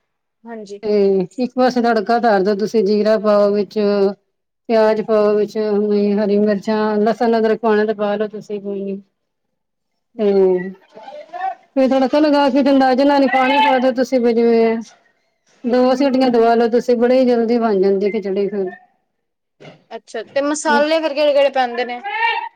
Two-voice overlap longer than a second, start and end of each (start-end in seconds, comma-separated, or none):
none